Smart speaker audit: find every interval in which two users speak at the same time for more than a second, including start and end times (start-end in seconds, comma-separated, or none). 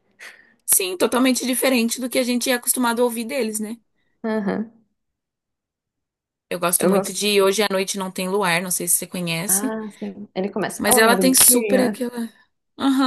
10.8-12.1